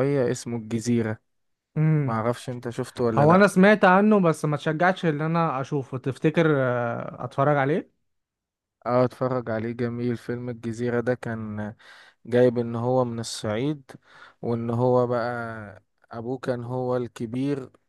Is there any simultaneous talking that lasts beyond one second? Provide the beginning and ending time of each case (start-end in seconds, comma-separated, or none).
none